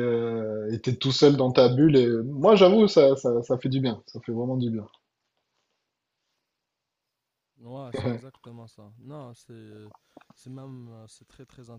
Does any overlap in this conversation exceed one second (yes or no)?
no